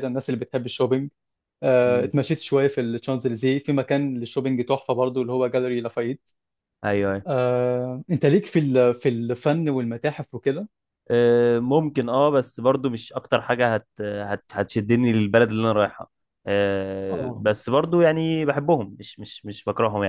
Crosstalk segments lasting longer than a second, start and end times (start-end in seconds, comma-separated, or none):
none